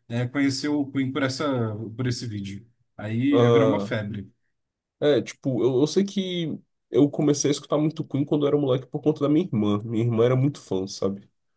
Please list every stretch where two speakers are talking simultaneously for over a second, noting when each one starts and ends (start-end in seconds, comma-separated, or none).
none